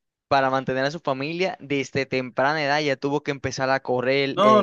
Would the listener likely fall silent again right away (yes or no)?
no